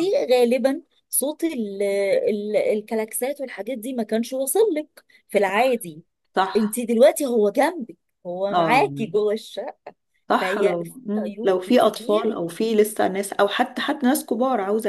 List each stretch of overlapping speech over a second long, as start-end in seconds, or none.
10.4-12.4